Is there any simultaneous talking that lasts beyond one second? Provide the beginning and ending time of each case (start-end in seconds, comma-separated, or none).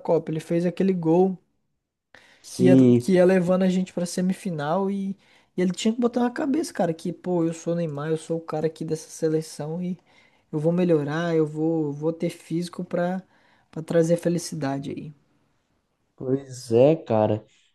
none